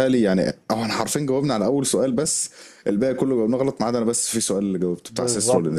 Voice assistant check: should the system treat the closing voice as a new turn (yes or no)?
yes